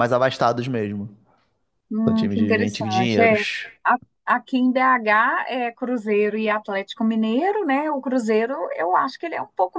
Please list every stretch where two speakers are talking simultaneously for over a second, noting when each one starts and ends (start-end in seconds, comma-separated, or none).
2.1-3.4